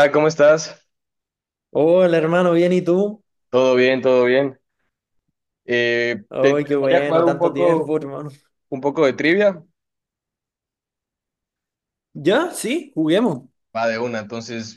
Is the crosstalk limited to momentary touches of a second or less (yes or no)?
no